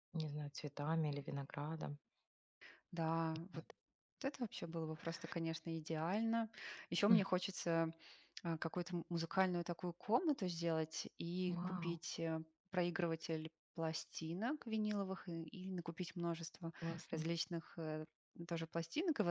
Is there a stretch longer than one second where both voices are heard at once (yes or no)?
no